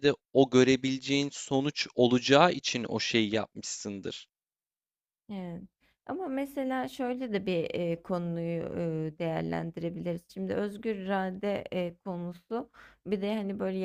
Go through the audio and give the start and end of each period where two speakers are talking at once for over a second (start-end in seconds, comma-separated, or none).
none